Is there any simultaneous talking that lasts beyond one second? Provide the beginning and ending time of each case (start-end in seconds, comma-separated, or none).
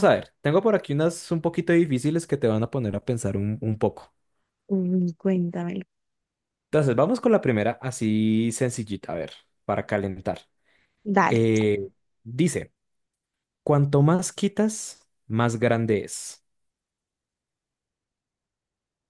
none